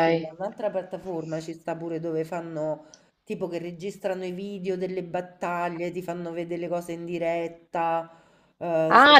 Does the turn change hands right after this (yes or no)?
yes